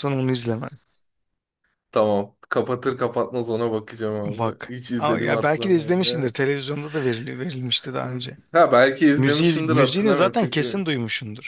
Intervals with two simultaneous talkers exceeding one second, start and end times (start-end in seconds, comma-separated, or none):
4.2-6.3, 9.1-10.8